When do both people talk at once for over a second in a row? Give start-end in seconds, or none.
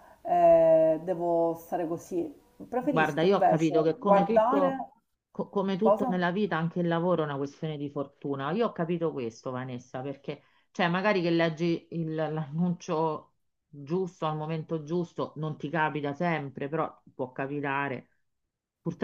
2.8-4.8